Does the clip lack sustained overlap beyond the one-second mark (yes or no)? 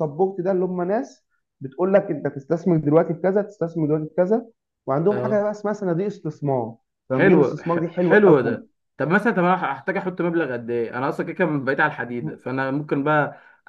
no